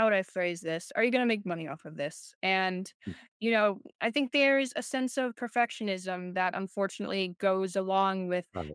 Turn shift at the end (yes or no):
no